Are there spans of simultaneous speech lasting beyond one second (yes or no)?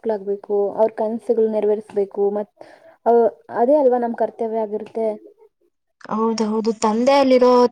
no